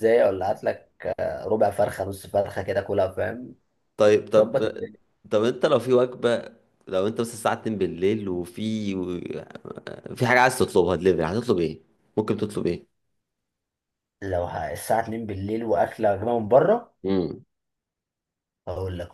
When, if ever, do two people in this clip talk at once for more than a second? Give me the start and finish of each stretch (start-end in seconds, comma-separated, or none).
none